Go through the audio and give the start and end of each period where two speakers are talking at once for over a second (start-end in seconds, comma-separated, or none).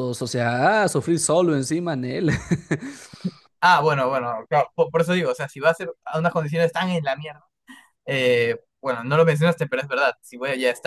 none